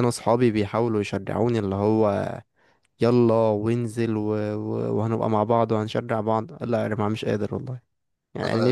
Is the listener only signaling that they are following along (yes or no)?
no